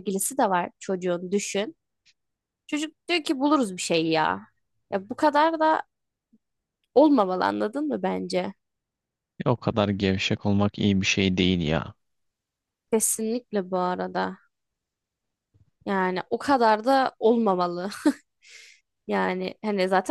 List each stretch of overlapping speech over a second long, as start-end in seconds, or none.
none